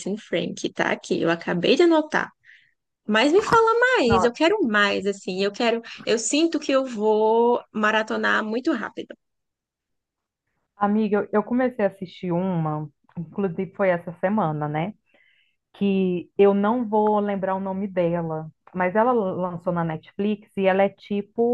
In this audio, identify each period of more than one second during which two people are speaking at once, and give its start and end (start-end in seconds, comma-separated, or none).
none